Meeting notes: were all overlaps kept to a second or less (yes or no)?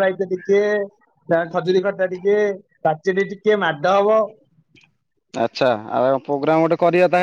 yes